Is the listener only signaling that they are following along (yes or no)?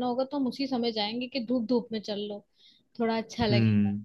yes